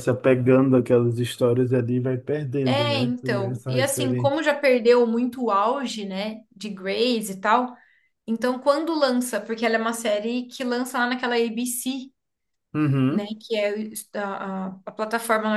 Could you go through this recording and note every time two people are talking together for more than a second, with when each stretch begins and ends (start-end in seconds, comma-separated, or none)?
2.6-4.4